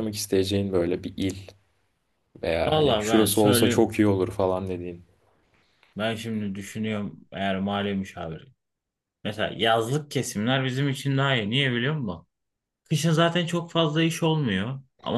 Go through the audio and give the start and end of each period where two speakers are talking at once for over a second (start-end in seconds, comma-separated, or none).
2.6-3.9